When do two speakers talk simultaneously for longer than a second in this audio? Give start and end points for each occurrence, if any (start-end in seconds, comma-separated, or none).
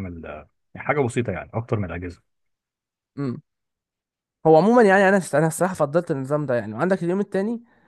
none